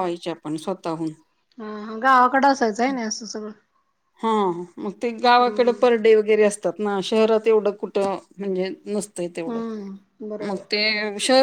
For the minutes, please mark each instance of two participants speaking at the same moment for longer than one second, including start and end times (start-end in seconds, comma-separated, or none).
none